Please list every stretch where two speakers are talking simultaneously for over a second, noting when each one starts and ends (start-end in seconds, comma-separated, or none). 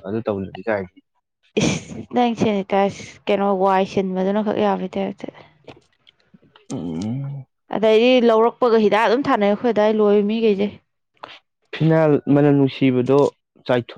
none